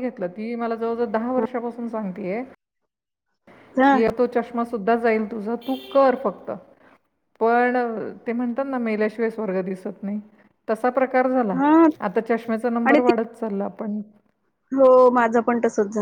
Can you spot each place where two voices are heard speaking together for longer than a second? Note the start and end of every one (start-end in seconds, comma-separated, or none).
none